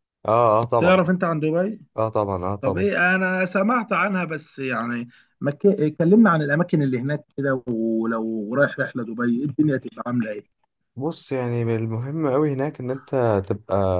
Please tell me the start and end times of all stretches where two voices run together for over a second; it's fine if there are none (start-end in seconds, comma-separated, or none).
none